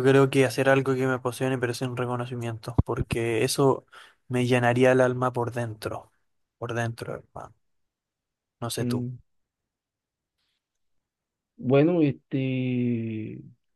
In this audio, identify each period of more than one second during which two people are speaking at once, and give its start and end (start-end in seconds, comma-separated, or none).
none